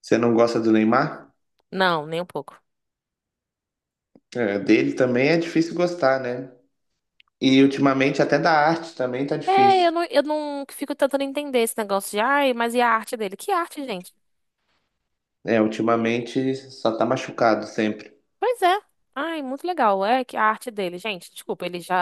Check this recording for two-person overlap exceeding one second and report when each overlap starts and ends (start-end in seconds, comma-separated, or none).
none